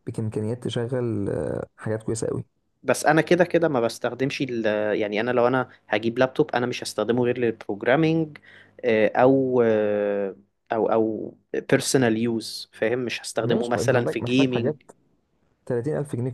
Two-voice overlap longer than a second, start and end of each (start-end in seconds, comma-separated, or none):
13.4-14.7